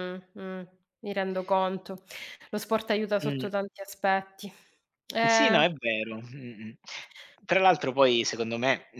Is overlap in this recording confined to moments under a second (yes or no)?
yes